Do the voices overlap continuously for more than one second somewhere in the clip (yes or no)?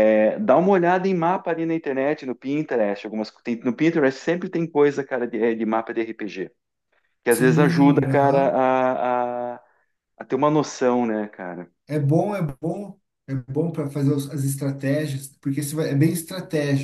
yes